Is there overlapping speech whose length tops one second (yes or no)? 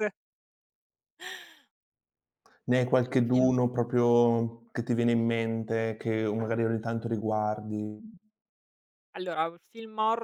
no